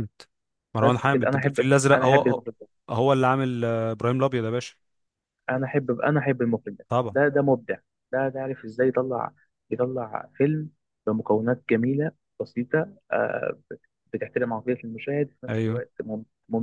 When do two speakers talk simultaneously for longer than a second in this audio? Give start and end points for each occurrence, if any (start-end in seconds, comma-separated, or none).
0.8-2.5